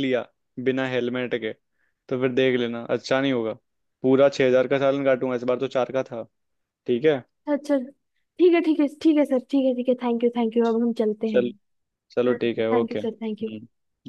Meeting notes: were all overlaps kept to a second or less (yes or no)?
no